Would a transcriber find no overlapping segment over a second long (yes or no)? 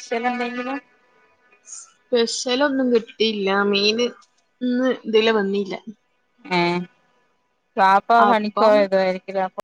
yes